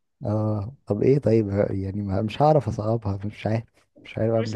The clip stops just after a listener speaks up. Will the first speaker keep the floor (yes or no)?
no